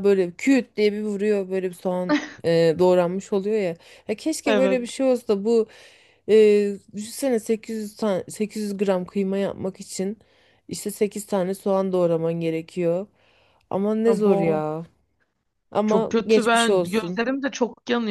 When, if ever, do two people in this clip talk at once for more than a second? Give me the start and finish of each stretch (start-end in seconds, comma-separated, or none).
15.8-17.2